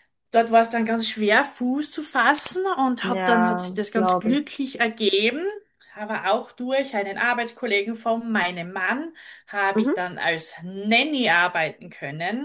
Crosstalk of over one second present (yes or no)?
yes